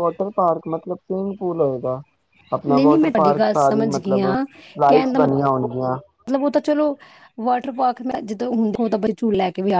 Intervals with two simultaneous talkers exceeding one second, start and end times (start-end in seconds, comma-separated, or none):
2.7-4.3